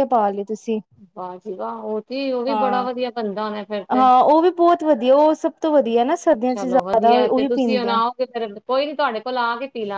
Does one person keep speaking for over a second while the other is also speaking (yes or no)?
yes